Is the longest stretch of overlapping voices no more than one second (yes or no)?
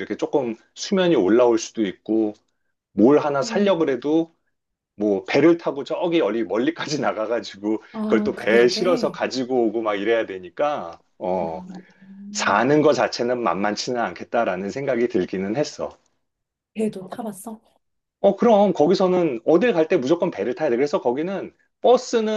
no